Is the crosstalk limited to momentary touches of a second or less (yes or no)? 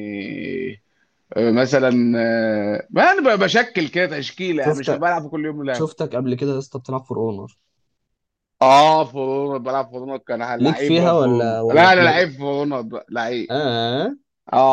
no